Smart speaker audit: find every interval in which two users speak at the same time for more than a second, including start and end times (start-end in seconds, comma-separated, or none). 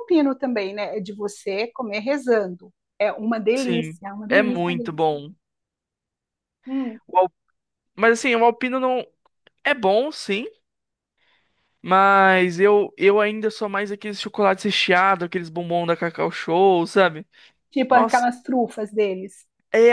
3.5-5.1